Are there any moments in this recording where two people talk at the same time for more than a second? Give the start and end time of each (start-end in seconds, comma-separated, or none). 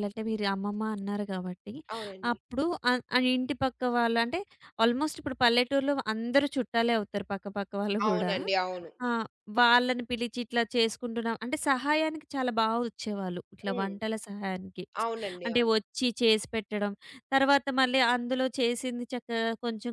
none